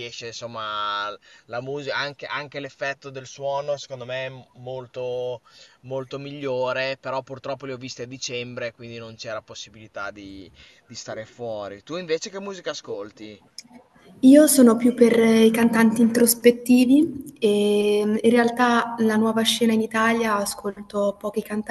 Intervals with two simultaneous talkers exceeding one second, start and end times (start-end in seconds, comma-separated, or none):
none